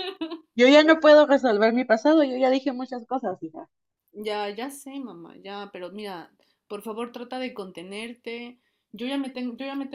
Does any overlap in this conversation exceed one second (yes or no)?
no